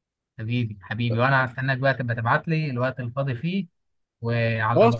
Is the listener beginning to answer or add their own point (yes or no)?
yes